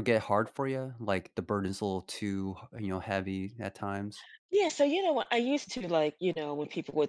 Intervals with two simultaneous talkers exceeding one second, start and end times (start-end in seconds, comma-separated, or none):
none